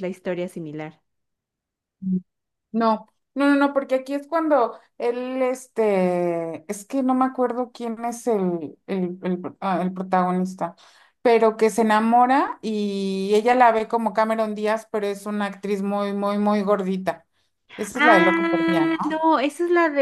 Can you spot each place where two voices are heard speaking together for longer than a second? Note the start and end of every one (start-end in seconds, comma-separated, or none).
17.9-19.2